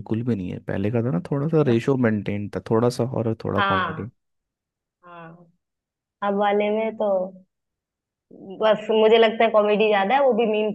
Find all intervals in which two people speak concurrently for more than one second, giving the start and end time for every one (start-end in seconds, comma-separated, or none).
none